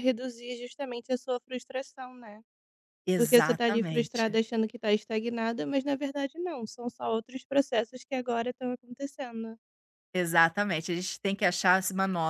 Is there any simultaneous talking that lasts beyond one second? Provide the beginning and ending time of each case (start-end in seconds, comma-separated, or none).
3.1-4.4